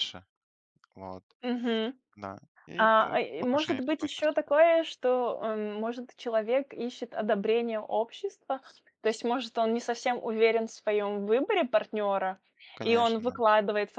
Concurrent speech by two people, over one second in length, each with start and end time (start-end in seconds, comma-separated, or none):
2.8-4.6